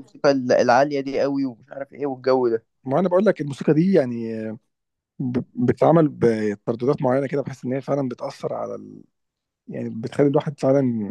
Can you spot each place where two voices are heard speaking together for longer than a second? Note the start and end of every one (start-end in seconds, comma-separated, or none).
none